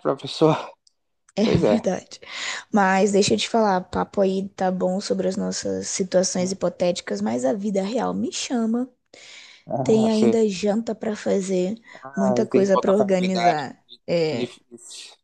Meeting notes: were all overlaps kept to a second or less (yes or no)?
no